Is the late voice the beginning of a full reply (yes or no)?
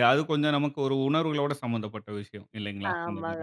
yes